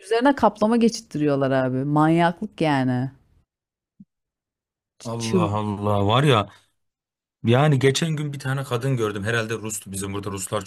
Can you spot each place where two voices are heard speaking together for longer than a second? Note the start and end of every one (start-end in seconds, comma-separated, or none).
none